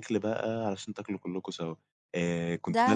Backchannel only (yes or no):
yes